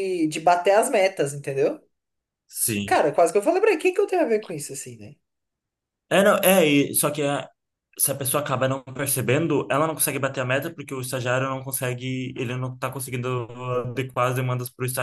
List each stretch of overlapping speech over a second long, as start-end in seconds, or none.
none